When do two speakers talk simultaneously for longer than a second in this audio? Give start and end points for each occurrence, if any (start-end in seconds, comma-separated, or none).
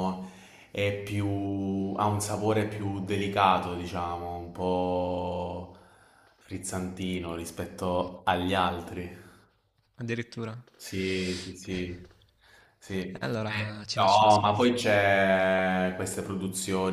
13.4-14.7